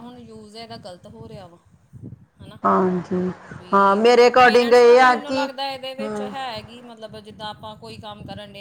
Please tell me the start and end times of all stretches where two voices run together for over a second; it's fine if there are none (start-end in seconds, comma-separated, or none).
4.0-6.3